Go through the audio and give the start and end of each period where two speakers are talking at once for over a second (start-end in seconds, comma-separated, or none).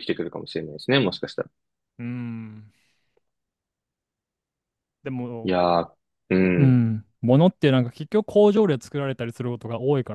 none